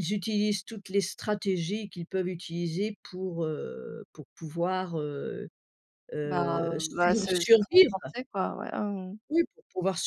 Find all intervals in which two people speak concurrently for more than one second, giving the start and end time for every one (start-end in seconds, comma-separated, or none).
6.2-7.9